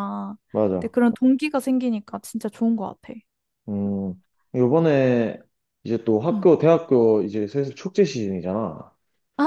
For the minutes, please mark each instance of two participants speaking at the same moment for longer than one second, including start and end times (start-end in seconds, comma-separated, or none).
none